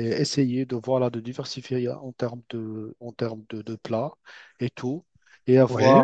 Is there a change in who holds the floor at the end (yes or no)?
no